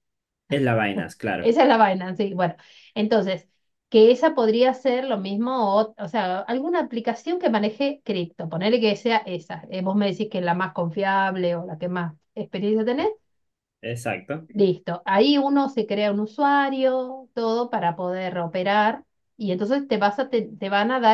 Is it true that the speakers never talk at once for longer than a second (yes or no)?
yes